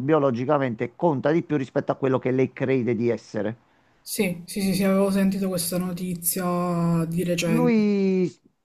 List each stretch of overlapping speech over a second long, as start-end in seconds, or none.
none